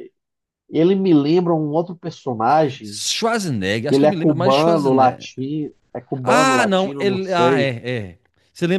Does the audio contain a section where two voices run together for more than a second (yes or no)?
yes